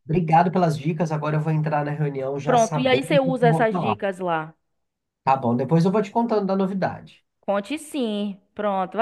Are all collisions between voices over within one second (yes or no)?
no